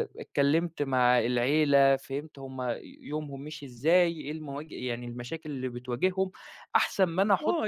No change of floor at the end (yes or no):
no